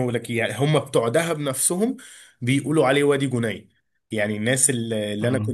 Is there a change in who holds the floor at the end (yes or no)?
no